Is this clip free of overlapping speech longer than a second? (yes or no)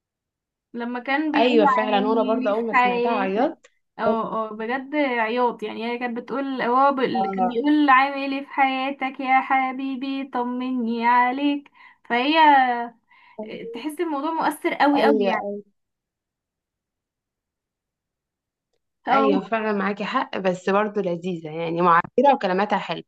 no